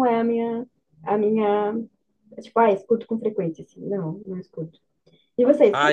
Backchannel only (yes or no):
no